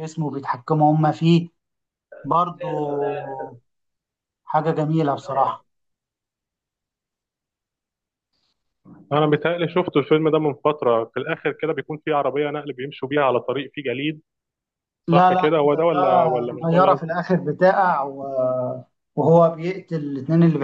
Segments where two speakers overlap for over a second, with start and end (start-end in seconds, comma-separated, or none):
15.1-17.2